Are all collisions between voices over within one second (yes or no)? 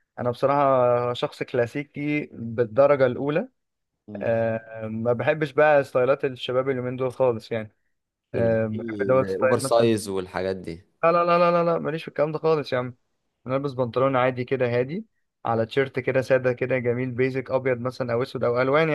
no